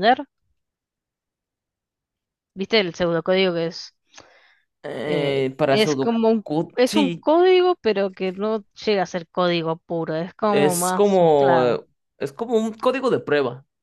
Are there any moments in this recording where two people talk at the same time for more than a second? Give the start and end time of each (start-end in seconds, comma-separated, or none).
5.0-7.2, 10.5-11.8